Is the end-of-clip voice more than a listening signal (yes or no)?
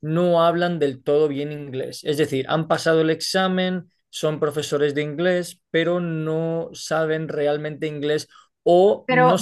no